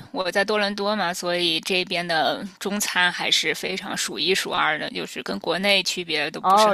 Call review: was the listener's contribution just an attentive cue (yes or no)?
no